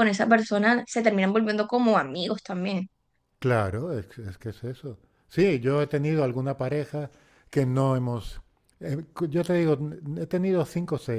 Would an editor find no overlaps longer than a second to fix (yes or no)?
yes